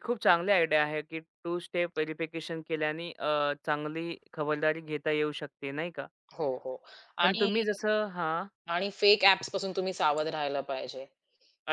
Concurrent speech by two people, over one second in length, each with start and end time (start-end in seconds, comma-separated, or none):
none